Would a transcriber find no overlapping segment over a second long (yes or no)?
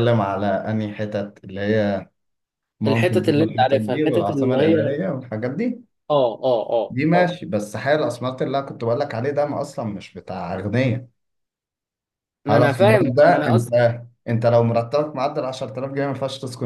no